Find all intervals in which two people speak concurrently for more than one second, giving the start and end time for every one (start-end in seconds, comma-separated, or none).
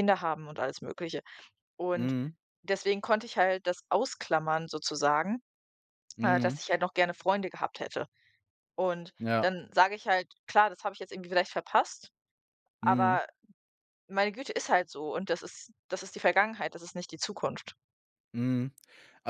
none